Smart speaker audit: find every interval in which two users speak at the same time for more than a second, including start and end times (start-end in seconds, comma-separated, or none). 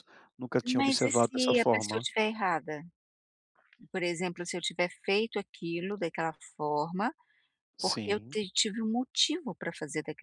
0.8-2.0